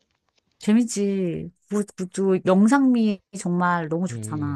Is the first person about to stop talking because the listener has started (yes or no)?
yes